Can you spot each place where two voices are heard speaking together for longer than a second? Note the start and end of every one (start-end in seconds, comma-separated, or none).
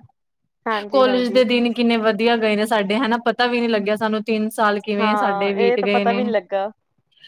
5.0-6.2